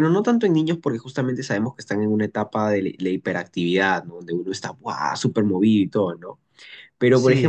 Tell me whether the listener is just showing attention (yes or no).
yes